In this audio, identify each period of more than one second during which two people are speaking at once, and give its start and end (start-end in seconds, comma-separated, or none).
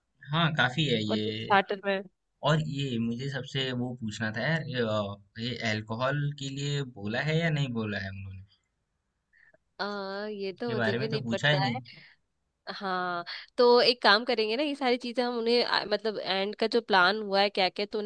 10.6-11.8